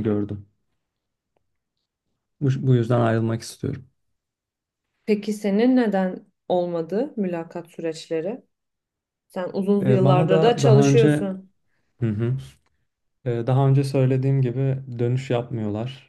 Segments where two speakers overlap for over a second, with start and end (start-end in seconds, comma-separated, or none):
9.8-11.1